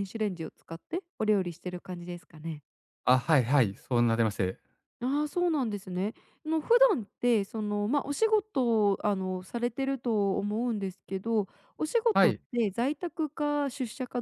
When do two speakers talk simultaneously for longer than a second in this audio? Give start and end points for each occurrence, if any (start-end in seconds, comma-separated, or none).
none